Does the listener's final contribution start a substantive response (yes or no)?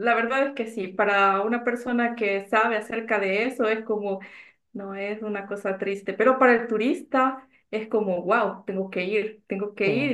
no